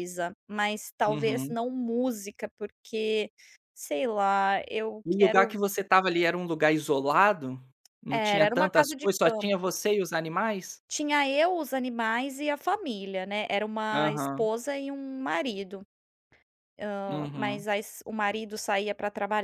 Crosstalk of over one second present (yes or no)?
yes